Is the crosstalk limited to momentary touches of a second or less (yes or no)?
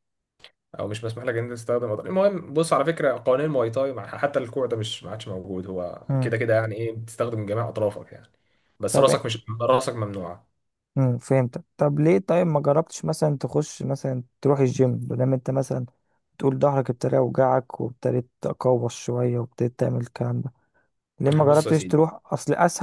yes